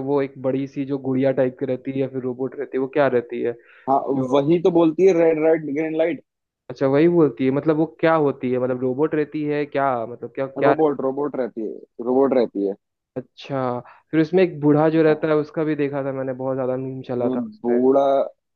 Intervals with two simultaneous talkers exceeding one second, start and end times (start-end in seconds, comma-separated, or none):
none